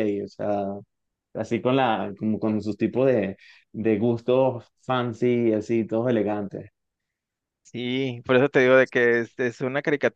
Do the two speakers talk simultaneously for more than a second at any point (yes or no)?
no